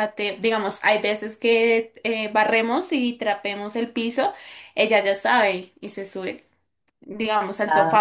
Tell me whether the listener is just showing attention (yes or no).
yes